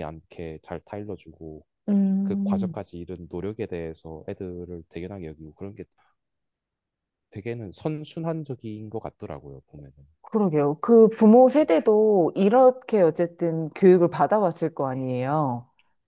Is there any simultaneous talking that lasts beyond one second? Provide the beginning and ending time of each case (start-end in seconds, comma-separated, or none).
none